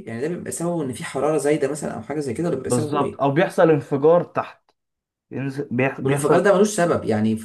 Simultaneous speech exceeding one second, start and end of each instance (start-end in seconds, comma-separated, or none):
none